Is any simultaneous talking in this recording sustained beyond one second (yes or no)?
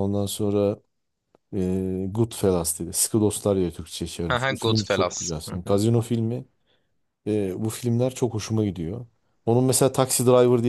yes